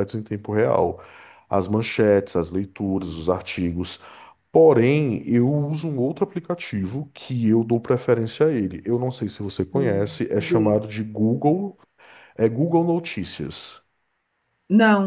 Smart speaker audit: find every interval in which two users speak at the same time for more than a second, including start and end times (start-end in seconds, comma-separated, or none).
9.7-11.0